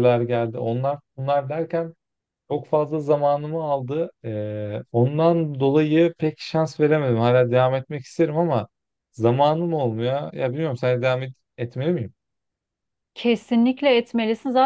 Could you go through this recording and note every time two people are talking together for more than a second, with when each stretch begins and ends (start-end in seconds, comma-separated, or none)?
none